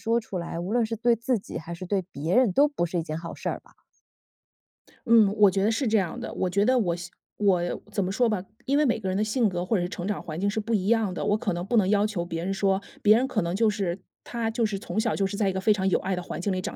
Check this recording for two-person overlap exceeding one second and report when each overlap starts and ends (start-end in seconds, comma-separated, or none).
none